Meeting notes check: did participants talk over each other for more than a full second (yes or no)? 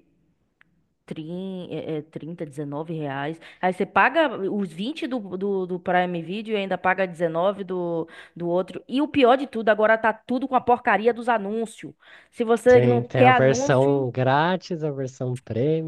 yes